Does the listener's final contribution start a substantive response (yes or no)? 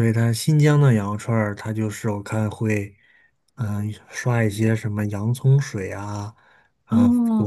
no